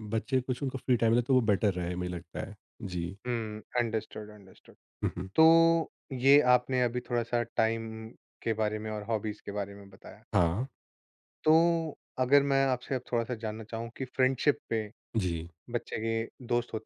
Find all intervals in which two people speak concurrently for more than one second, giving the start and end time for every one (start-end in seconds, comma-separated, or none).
none